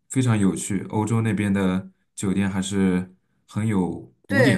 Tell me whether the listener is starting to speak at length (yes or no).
yes